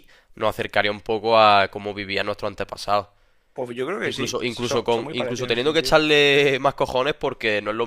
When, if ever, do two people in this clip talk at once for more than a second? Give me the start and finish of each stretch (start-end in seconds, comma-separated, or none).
4.1-6.0